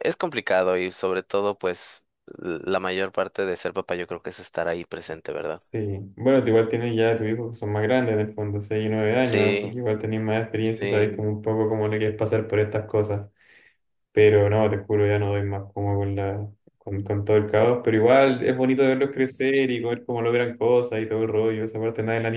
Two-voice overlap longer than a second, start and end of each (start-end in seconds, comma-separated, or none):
none